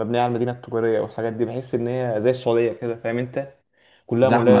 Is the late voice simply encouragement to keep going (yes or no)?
yes